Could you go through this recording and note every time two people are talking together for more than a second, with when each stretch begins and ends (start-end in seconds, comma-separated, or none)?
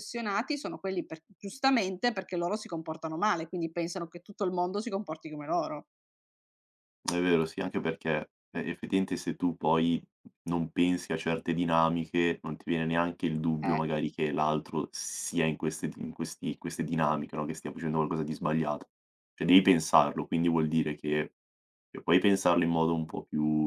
none